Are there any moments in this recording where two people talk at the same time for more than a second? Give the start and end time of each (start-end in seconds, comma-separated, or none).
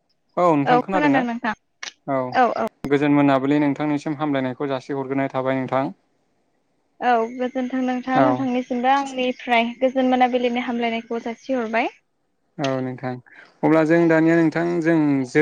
none